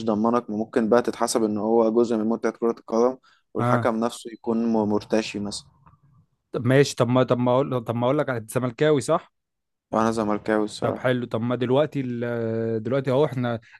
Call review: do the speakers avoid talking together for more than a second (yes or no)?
yes